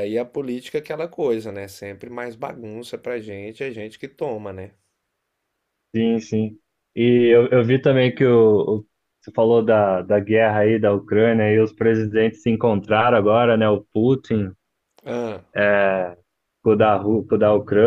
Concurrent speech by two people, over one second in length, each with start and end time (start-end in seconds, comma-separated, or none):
none